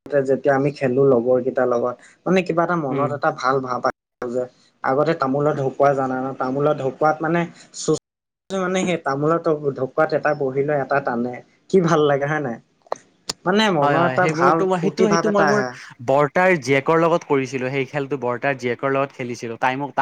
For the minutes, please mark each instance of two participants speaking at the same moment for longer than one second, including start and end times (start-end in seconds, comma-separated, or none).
13.8-15.6